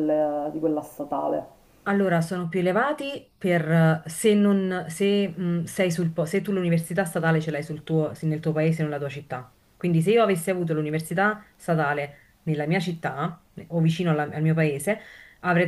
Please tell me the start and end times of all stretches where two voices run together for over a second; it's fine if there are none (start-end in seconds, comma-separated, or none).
none